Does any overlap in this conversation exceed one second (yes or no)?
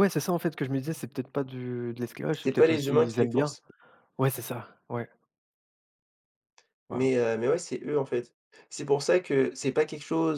yes